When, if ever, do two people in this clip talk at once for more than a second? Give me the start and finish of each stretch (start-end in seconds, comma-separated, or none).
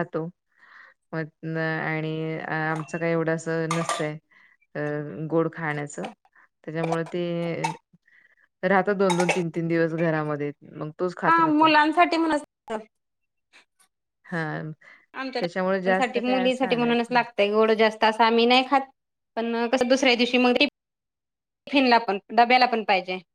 15.4-17.2